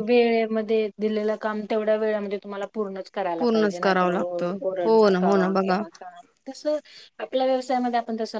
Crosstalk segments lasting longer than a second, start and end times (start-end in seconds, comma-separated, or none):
3.4-5.8